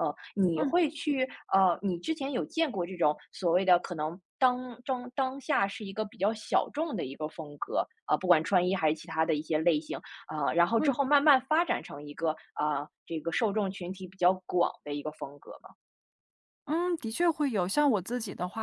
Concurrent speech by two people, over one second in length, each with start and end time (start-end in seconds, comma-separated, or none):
none